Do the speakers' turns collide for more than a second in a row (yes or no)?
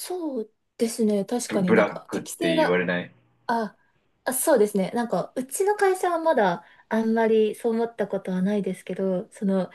yes